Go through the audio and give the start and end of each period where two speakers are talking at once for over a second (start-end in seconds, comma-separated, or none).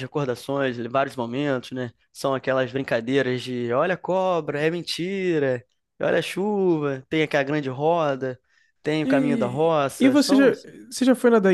9.0-10.4